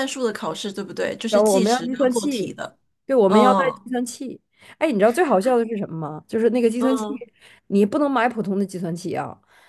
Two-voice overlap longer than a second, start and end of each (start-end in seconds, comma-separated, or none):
1.3-2.6